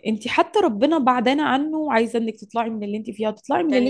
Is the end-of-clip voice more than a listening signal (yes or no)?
yes